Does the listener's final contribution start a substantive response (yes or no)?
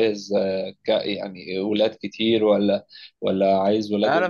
yes